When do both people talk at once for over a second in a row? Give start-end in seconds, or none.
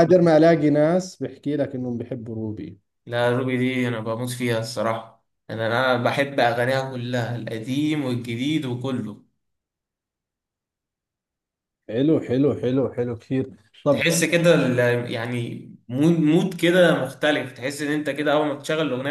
none